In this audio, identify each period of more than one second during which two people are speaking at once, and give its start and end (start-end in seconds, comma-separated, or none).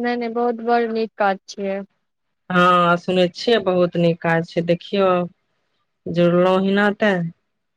none